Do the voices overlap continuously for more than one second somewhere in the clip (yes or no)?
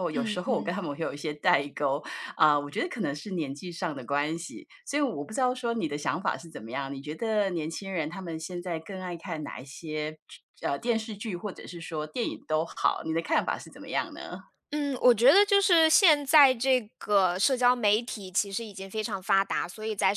no